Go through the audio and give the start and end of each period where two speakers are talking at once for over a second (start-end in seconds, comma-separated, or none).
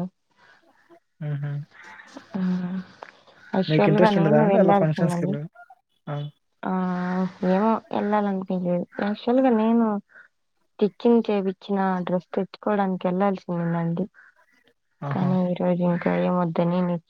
3.7-5.3